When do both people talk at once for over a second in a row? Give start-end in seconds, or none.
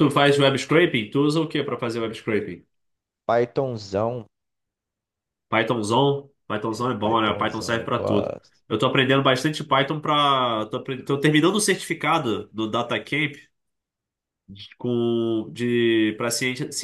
7.0-8.6